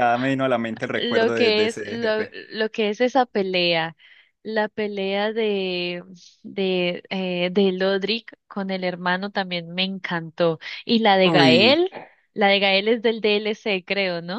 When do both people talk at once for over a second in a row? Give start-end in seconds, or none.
0.9-2.4